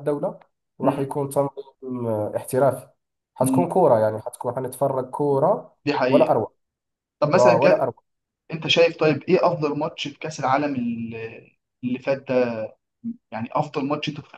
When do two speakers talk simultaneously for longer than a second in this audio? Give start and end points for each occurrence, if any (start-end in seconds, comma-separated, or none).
none